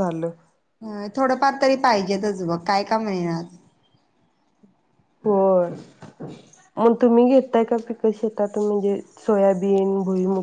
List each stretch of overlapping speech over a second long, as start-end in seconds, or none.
none